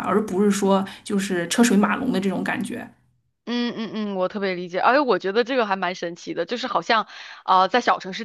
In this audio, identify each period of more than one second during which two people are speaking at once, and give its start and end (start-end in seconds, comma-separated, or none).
none